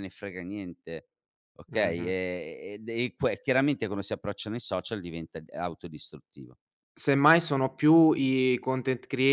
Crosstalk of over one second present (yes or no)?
no